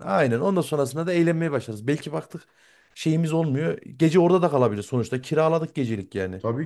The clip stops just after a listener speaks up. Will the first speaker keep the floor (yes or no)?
no